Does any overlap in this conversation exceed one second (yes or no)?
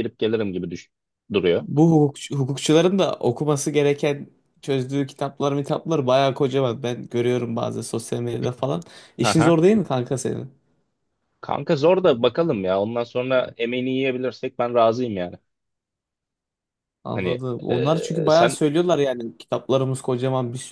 yes